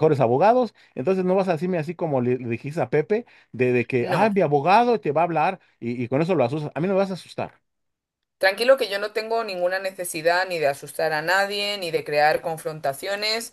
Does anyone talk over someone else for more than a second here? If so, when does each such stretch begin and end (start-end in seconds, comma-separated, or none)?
none